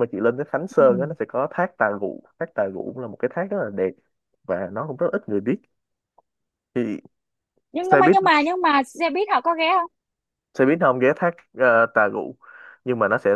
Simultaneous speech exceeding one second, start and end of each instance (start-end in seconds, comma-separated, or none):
none